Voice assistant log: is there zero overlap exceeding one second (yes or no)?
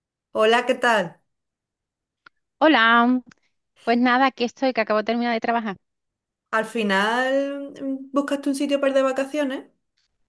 yes